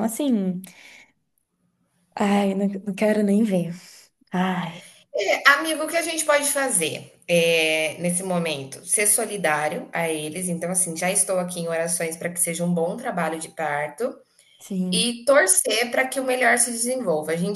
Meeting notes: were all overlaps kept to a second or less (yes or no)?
yes